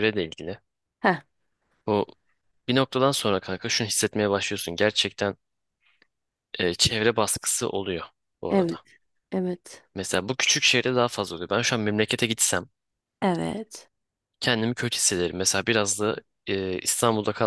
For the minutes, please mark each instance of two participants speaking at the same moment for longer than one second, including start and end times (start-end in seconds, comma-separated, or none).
none